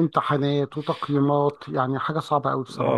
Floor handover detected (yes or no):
yes